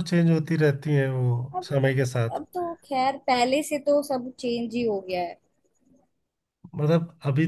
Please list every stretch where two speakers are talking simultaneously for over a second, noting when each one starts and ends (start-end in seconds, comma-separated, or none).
none